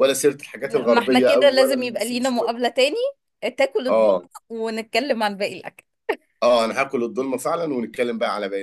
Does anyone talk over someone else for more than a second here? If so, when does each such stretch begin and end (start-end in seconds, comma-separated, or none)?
0.7-2.5